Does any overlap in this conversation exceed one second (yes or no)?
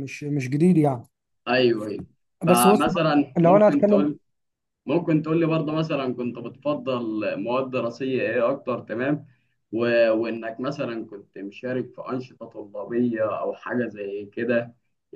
yes